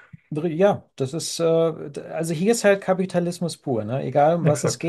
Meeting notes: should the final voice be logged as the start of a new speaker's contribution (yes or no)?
no